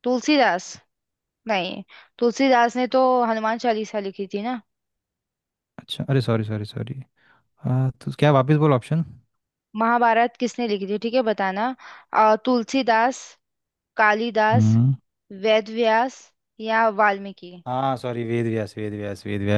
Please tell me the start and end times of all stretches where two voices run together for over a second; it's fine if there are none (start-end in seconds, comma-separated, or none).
none